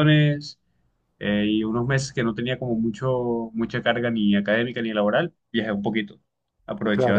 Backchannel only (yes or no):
no